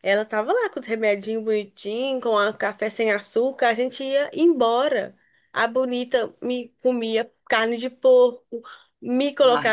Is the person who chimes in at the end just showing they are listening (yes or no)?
yes